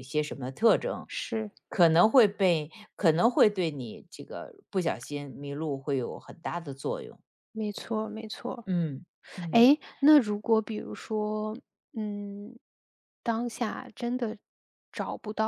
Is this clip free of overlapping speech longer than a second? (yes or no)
yes